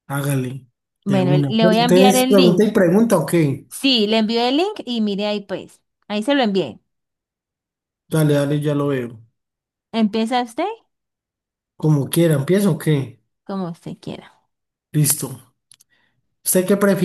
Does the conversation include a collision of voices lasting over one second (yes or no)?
yes